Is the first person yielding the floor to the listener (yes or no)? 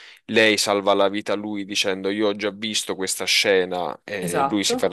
no